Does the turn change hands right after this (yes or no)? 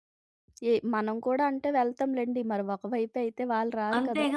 yes